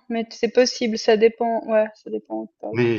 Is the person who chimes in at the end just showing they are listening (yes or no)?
no